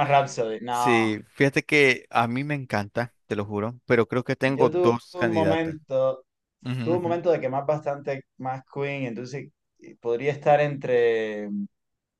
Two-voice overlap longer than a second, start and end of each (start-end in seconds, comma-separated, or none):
4.5-5.8